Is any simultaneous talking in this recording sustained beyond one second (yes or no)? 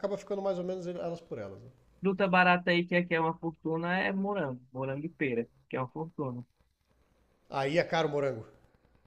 no